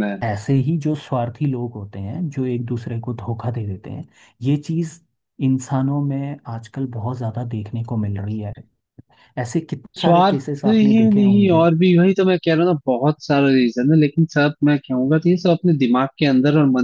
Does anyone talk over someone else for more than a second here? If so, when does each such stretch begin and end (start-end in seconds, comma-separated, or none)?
10.0-11.7